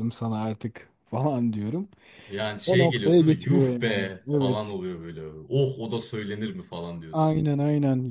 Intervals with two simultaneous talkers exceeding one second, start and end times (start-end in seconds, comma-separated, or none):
2.7-4.7